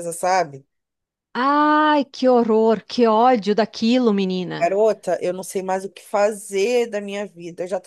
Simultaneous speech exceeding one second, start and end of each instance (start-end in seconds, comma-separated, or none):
none